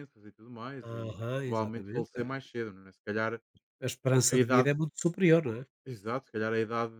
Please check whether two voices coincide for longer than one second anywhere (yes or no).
yes